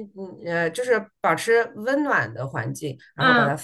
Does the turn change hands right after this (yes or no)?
yes